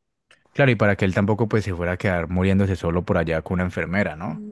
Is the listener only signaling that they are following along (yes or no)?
yes